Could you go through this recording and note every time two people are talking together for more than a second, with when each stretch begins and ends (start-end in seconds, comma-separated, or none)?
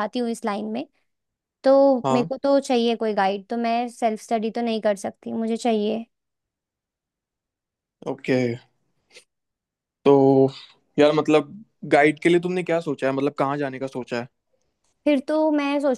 none